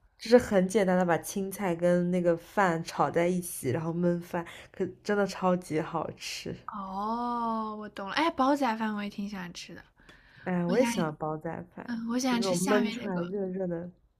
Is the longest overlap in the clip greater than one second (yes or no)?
yes